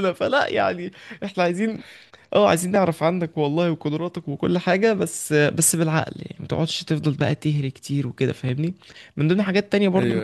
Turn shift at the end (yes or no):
no